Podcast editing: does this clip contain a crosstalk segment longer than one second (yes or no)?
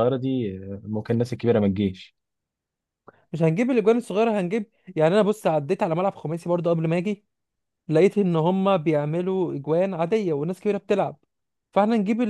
no